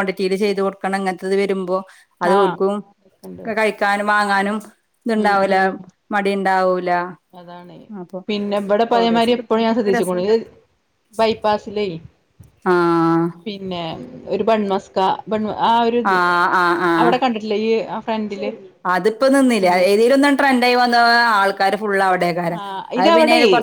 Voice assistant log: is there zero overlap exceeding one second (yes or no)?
no